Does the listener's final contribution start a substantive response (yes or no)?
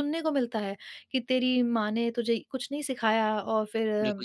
yes